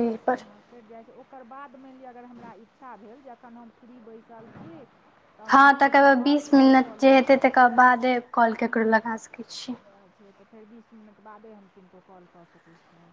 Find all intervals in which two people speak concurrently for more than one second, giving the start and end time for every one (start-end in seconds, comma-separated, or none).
5.5-7.4